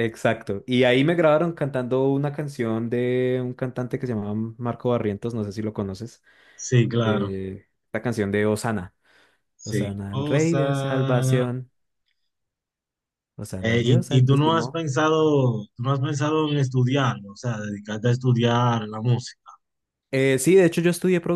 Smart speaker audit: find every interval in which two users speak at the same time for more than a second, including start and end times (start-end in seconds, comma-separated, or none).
9.6-11.5, 13.6-14.8